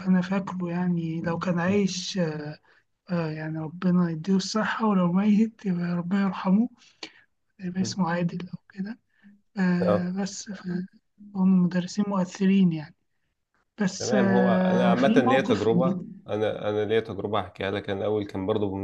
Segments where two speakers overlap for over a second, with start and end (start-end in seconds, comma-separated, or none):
14.0-16.2